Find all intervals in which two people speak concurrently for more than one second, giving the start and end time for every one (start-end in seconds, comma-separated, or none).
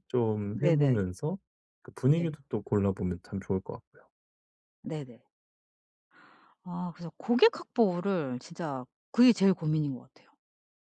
none